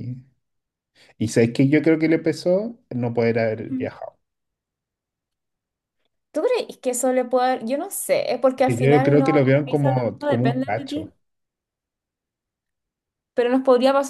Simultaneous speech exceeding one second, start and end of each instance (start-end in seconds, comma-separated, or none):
8.7-11.1